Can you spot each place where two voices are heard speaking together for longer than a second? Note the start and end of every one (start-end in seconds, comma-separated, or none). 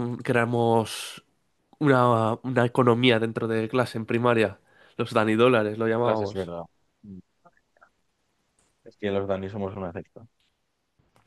none